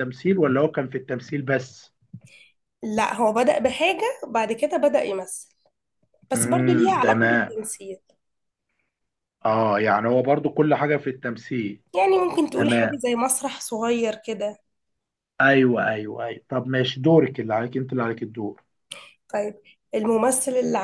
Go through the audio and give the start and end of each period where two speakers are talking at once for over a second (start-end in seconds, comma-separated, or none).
6.3-7.5